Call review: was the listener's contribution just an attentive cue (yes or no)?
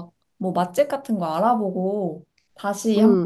no